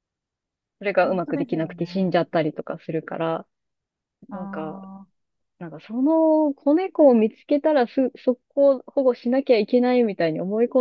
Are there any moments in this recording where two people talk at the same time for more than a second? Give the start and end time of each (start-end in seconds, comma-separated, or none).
1.0-2.2